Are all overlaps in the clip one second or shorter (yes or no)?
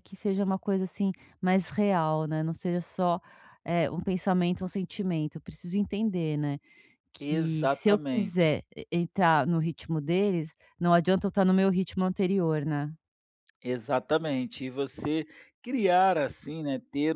no